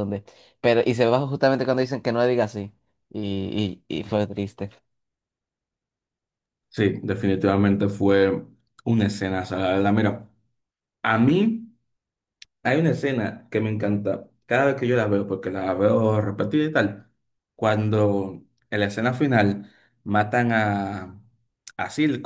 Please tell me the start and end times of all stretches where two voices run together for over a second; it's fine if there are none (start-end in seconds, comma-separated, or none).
none